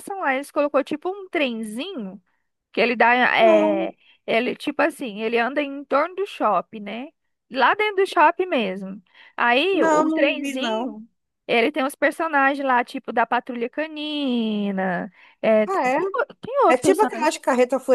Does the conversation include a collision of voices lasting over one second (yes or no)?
yes